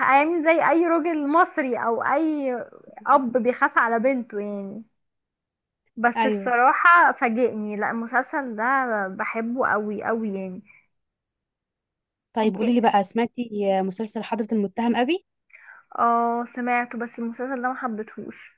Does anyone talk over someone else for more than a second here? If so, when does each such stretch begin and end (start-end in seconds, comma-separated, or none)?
none